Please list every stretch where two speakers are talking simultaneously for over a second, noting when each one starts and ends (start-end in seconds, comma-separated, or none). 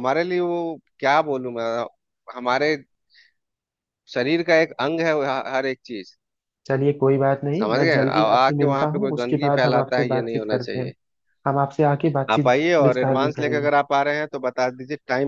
7.6-10.9, 12.3-13.7